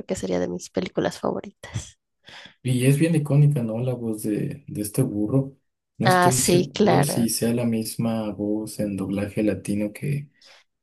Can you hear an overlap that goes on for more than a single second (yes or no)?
yes